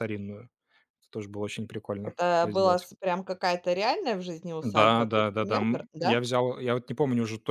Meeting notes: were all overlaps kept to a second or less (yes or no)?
no